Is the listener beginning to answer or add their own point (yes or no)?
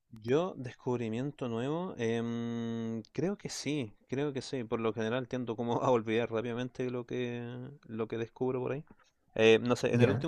no